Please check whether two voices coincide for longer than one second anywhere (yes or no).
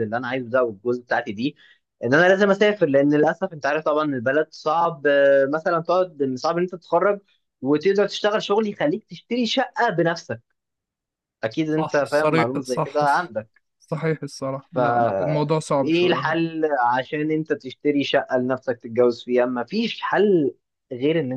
yes